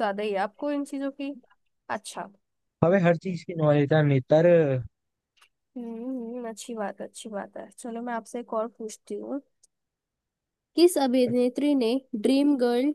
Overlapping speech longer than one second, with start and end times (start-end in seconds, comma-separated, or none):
none